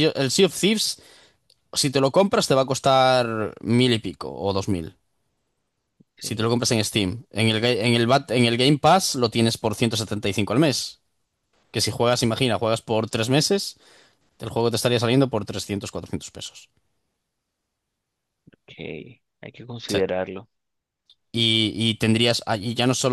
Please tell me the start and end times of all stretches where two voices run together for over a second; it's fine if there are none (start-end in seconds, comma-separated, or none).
none